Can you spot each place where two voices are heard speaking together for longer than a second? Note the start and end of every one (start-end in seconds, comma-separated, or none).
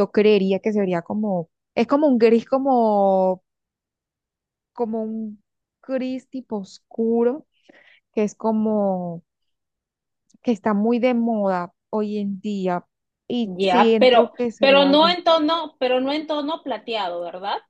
13.4-15.2